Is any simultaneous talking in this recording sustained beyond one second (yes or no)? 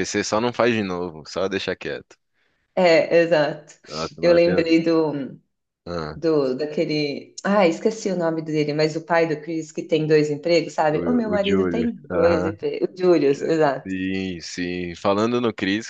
yes